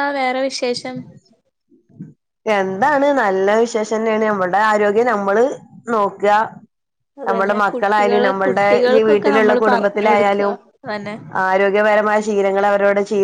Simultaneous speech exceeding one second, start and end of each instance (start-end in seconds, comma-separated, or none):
7.3-10.4